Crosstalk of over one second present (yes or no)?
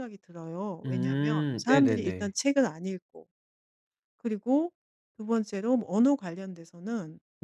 yes